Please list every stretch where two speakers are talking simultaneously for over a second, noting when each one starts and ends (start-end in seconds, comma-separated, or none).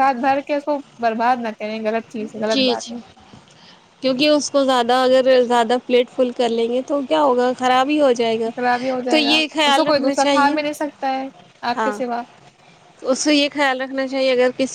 9.1-10.5